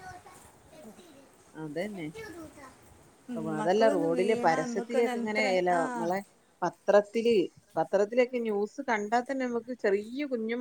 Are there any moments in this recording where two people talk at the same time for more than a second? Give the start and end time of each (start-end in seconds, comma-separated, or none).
3.4-5.8